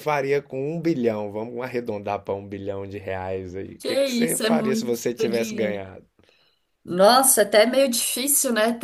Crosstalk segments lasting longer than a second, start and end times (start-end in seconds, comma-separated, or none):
3.8-5.8